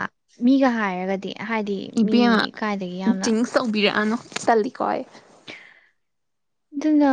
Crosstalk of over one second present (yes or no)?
no